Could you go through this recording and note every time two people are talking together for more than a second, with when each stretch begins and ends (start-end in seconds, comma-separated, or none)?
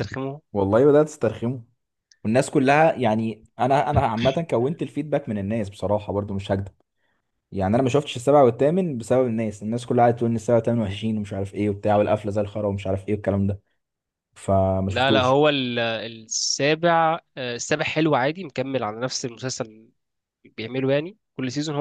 none